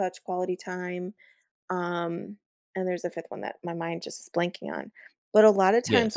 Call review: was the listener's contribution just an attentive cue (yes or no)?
yes